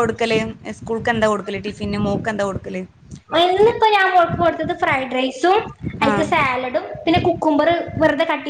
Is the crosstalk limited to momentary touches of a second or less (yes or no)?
yes